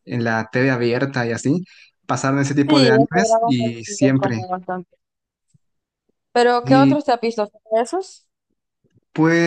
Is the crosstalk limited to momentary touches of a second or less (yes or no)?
no